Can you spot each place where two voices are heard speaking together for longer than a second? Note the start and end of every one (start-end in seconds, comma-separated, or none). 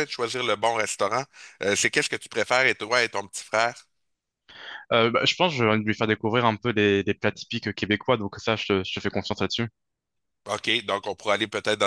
none